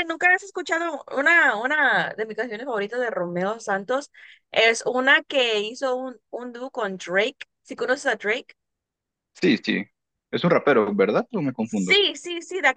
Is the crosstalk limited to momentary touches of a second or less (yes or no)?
yes